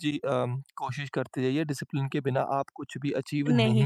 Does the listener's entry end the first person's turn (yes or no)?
yes